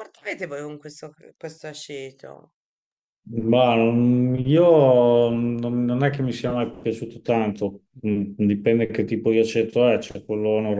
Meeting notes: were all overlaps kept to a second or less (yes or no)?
yes